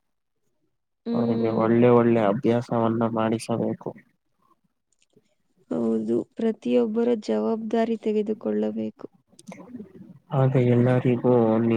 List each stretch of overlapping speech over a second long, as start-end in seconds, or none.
none